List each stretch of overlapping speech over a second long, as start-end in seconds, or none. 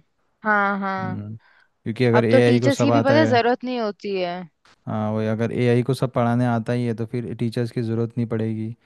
2.1-3.4